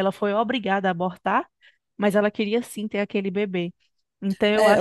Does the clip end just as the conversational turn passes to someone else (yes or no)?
yes